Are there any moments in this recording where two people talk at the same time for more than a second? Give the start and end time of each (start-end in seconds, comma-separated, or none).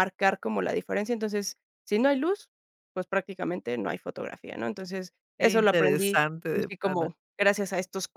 5.4-7.1